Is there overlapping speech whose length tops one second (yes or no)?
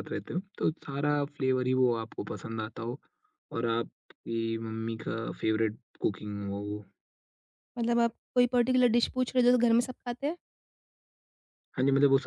no